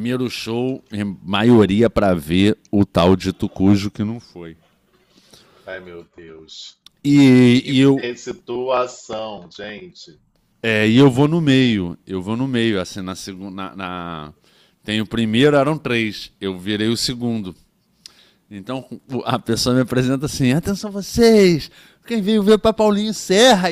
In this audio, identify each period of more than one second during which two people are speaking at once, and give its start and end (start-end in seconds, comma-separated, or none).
none